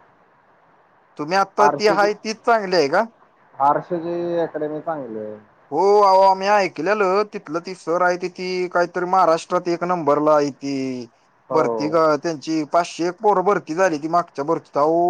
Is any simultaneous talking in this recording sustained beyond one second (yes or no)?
no